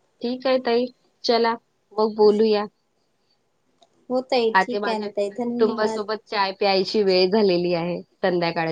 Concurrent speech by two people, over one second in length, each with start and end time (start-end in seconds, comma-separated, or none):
4.6-6.0